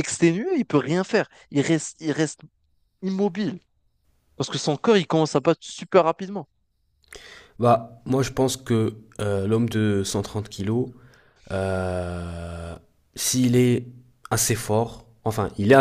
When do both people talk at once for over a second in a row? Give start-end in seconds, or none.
none